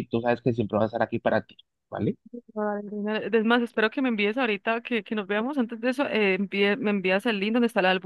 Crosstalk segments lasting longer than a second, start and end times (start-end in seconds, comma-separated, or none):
none